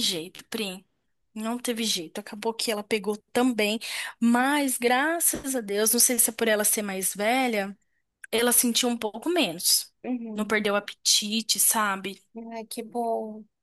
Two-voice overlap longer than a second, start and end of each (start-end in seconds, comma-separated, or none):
none